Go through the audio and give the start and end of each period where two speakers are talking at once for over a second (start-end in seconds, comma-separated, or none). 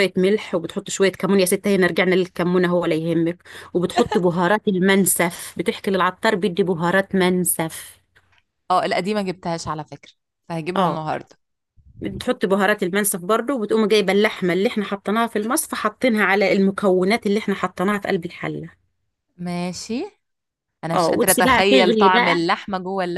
20.9-22.4